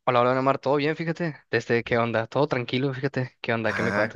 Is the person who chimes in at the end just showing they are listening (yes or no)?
no